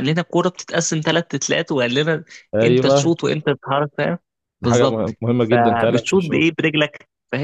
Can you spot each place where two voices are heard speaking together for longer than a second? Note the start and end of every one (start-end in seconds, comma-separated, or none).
4.6-6.5